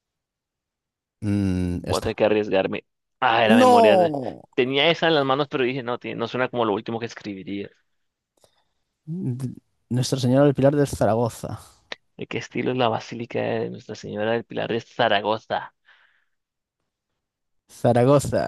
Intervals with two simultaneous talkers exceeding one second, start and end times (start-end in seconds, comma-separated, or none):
none